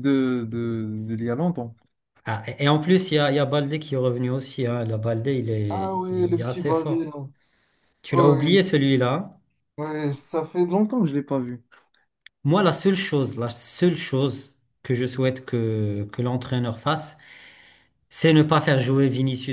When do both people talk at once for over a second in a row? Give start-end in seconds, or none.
5.7-7.1